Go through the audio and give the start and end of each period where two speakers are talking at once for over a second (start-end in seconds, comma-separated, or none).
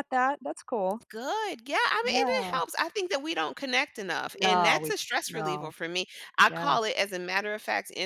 4.4-5.8